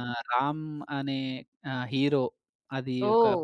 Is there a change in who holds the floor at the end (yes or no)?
no